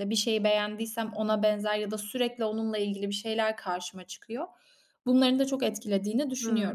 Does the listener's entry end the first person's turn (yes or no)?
yes